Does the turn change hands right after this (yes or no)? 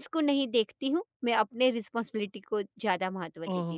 yes